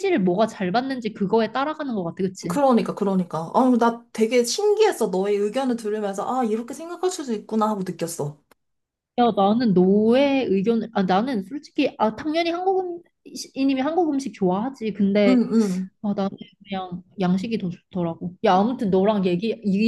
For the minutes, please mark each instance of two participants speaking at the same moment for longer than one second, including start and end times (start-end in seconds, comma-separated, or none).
none